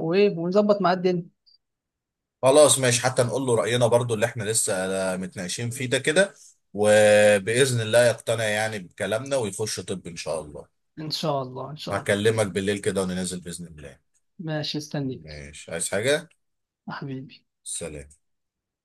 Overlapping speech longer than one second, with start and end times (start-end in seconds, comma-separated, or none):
none